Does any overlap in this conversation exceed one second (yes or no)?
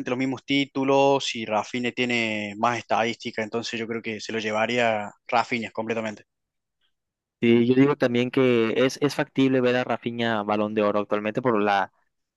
no